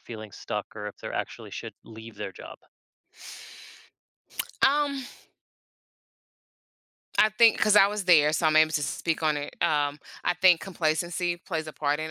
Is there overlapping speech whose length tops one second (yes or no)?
no